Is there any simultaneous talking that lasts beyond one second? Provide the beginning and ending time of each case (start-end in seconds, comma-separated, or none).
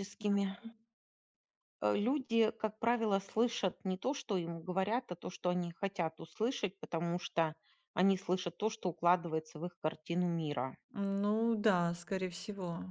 none